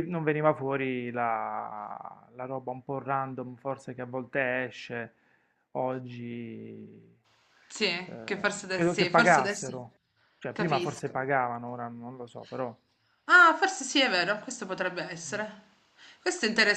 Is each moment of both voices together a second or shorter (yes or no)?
no